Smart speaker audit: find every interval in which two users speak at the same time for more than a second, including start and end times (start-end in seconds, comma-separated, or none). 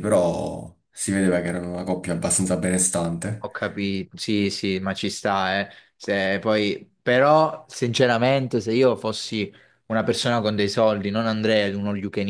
none